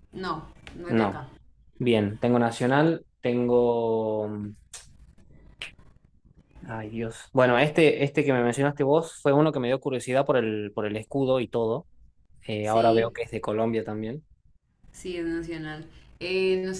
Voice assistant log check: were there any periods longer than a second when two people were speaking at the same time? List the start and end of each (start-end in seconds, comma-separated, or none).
none